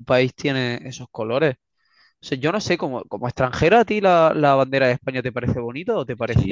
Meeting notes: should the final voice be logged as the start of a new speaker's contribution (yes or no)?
yes